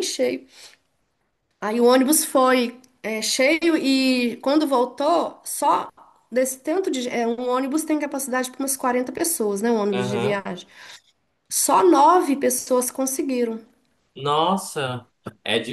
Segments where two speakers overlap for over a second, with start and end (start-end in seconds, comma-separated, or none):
none